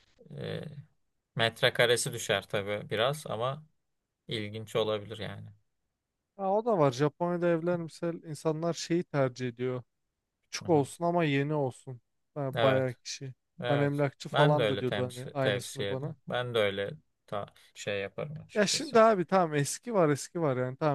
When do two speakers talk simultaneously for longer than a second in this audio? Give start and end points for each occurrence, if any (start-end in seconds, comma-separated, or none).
13.6-16.1